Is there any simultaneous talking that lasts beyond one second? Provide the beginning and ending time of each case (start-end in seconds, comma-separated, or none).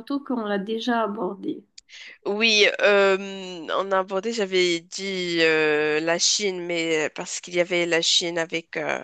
none